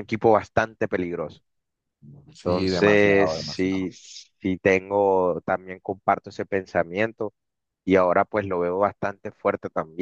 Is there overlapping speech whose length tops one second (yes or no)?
yes